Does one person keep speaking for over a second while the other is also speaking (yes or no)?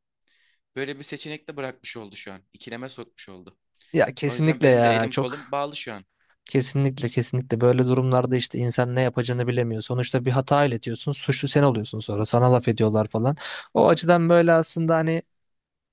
yes